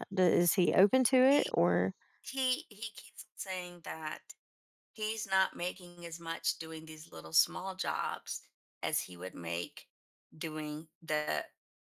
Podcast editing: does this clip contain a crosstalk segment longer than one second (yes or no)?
no